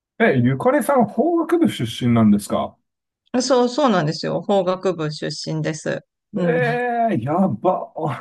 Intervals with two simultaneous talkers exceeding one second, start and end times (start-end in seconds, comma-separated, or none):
none